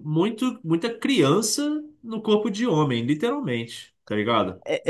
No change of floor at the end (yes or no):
no